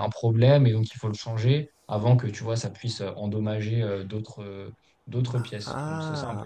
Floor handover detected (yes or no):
yes